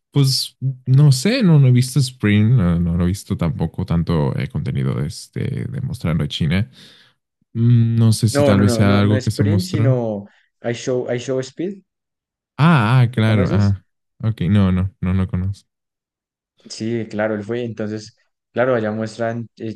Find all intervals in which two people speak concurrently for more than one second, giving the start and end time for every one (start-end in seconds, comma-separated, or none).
8.3-10.0